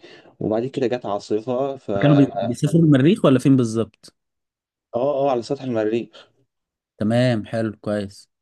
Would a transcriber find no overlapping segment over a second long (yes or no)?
yes